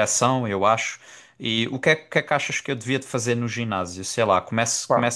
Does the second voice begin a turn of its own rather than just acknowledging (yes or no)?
no